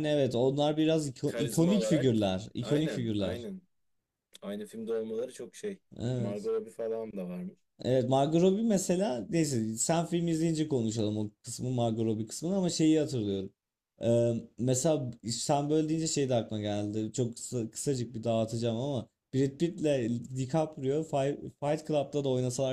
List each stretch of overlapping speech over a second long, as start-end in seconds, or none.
1.2-3.5